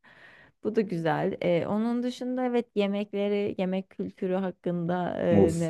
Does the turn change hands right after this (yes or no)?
yes